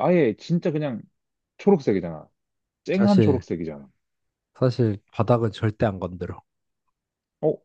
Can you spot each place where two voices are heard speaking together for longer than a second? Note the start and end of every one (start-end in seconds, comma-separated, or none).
none